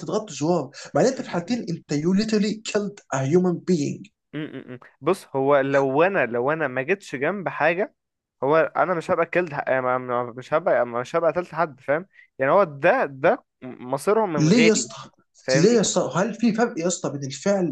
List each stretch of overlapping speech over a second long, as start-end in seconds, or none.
none